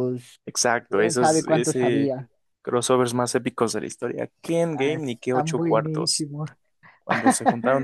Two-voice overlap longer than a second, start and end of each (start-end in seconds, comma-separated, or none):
0.9-2.1, 4.7-6.3